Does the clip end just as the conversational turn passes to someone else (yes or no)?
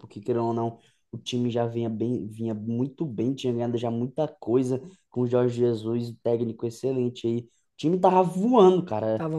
no